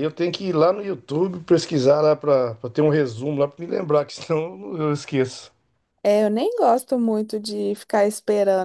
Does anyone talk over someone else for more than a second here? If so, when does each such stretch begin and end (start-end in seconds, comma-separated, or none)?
none